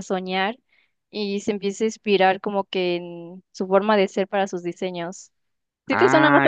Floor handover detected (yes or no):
yes